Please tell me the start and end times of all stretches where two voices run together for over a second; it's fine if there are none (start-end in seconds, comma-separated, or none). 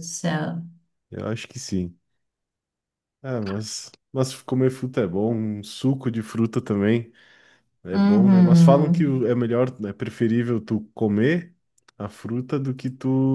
7.9-9.3